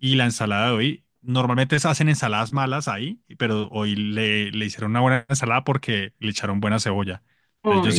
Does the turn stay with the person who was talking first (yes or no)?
yes